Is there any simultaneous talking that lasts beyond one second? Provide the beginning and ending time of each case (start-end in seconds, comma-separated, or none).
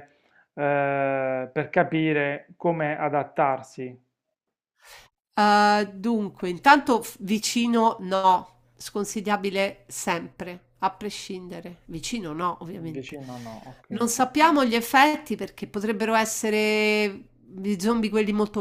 none